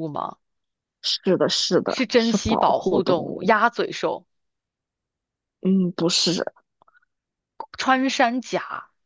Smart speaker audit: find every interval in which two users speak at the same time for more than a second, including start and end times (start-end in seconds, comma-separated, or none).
1.9-3.5